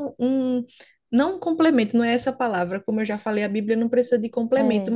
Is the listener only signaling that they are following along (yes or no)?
yes